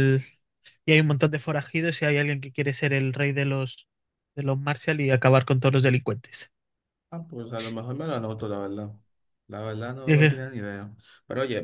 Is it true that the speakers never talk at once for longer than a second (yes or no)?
yes